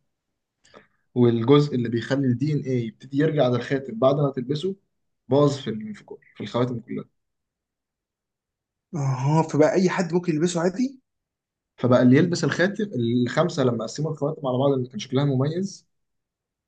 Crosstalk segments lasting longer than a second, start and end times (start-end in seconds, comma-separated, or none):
none